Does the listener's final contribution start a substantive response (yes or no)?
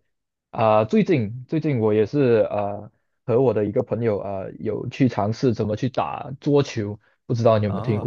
yes